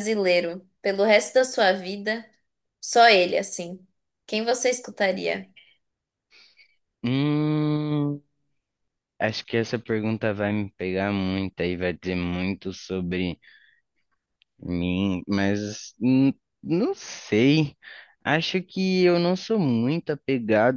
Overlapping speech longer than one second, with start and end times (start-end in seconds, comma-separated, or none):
none